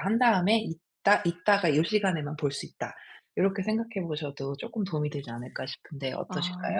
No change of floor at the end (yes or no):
no